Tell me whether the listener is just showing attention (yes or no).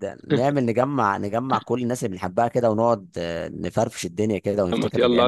no